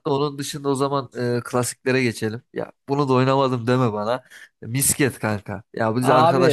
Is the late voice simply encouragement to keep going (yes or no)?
yes